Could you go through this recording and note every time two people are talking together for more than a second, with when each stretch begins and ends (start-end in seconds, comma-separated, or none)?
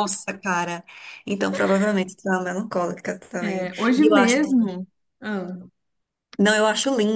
3.4-4.7